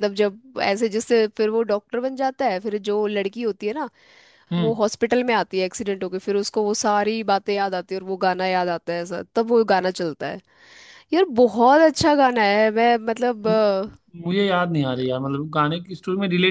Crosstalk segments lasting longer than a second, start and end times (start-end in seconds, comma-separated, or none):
none